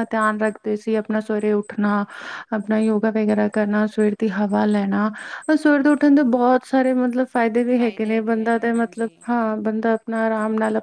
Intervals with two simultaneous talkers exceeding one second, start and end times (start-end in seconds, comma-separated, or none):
7.8-9.2